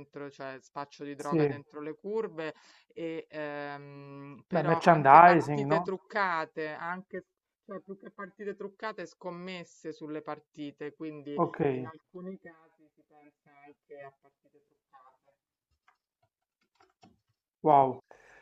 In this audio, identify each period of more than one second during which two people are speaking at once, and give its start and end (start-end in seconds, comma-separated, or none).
4.5-5.9